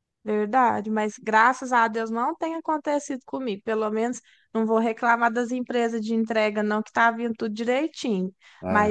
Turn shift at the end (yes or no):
no